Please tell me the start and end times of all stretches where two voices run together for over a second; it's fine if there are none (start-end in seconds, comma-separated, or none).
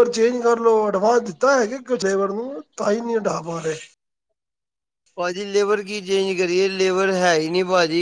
none